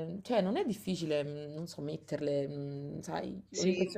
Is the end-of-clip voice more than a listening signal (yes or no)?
yes